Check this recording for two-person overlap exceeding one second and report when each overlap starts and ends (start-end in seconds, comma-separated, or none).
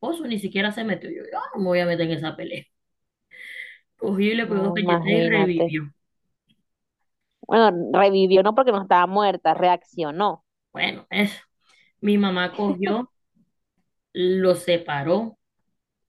4.4-5.8